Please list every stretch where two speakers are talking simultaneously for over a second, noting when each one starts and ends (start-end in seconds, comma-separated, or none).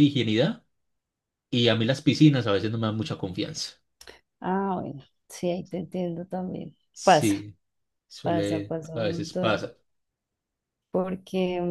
8.2-9.6